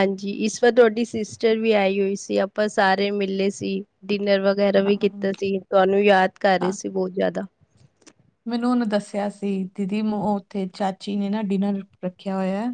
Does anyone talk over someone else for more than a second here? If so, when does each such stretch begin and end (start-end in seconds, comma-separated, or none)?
none